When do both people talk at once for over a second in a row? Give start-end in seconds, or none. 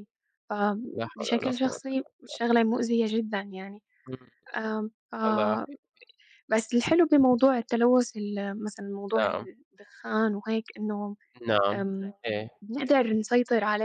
0.9-2.4